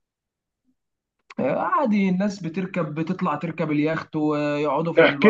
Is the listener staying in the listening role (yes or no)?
no